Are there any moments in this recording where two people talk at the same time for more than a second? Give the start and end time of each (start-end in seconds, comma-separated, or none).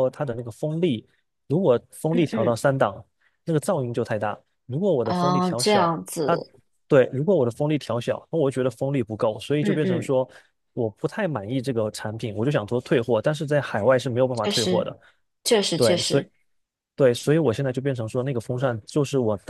5.0-6.4